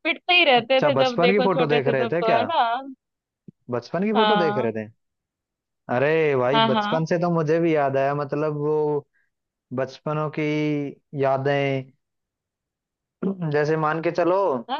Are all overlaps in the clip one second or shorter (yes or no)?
no